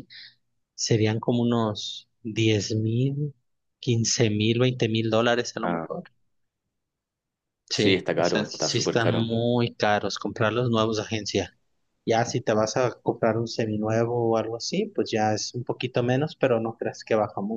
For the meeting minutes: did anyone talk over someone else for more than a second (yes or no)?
yes